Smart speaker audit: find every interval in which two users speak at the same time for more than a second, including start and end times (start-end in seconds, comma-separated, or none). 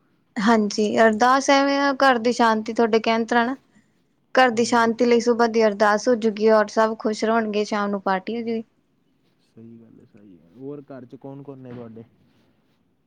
none